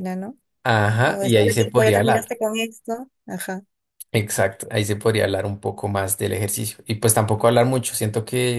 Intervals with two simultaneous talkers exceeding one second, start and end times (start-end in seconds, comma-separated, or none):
1.0-2.3